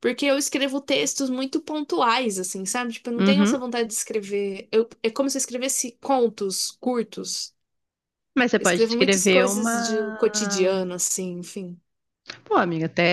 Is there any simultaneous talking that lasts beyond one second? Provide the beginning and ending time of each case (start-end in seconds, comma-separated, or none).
8.6-10.2